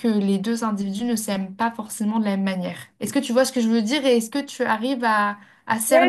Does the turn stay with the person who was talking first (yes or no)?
no